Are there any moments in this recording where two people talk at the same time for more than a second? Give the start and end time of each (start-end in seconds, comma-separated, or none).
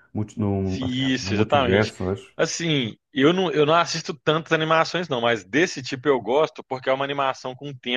0.6-1.9